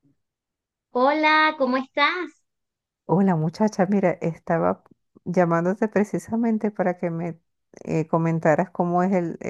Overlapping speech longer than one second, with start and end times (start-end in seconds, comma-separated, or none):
none